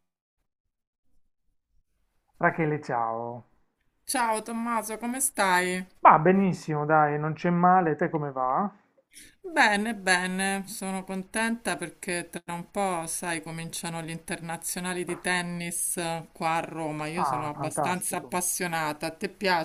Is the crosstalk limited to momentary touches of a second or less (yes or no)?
no